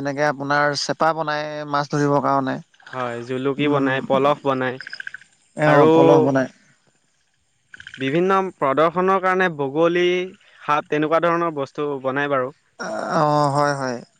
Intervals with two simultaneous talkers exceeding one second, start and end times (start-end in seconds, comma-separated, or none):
none